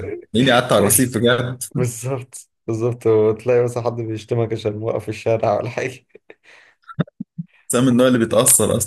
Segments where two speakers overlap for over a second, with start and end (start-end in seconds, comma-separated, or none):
none